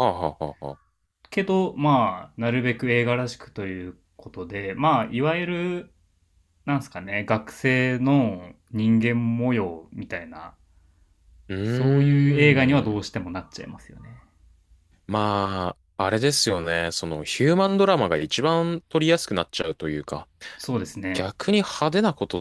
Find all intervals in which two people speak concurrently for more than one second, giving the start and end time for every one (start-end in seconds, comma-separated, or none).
11.6-13.1